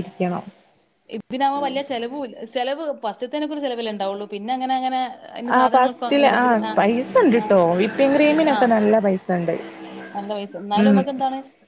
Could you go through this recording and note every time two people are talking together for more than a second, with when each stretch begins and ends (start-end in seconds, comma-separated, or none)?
none